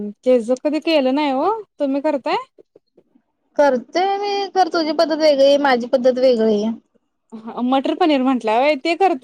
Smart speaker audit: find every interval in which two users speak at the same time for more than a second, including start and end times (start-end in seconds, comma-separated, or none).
none